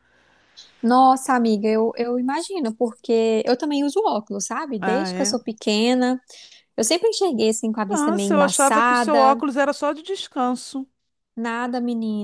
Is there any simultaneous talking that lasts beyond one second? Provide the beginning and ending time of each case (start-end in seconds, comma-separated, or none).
7.9-9.4